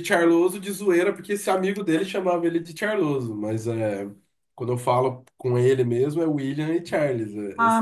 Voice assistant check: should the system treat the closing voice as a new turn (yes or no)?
yes